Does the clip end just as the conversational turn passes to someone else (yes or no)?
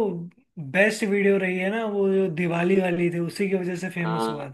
yes